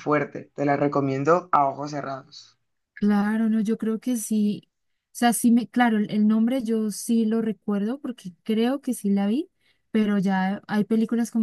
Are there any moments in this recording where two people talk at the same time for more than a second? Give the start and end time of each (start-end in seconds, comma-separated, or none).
none